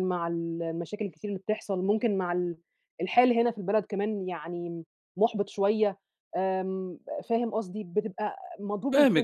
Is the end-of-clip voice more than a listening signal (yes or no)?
yes